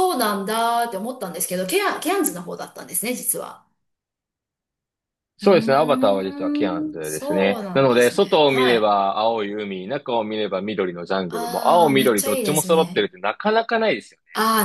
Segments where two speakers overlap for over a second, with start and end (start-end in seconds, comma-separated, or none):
5.4-8.9, 11.3-13.1